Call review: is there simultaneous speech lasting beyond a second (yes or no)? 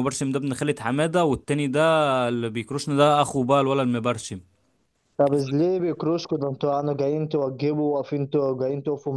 no